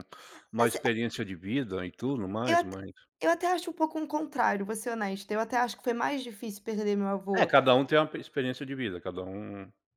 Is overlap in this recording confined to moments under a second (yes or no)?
yes